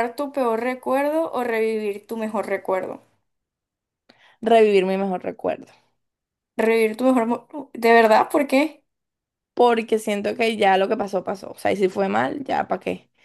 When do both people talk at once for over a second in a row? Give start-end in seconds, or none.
none